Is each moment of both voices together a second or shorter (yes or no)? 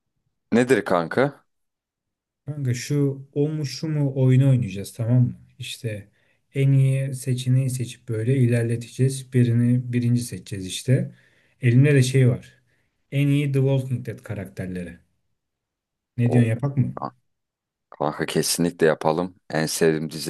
yes